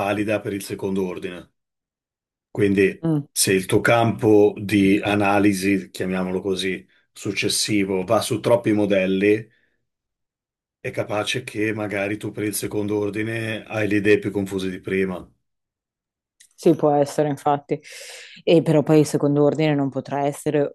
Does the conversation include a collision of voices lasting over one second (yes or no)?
no